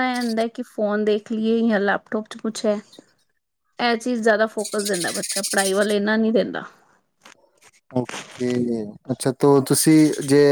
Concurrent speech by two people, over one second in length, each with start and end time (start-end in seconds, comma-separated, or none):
none